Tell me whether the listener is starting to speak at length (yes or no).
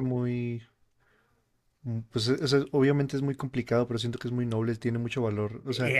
yes